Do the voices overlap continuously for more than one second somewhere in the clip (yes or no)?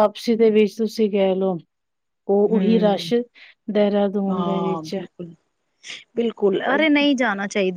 no